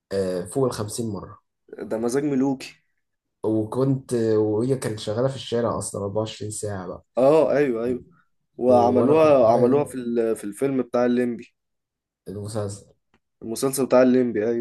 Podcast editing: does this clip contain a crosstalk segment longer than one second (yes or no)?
yes